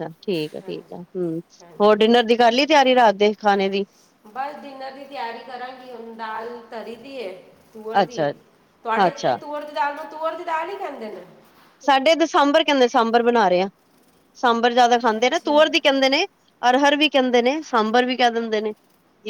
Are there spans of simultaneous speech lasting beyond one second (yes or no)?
no